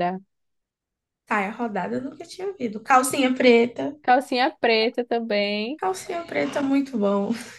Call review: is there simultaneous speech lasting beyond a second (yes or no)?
no